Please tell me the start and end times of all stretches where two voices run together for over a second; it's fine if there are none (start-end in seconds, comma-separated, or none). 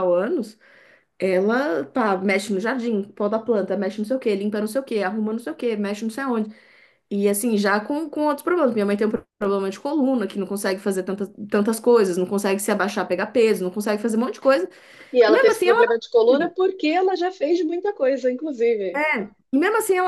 none